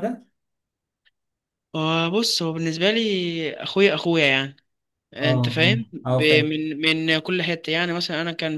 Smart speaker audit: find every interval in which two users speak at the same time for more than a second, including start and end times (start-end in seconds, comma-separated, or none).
5.2-6.5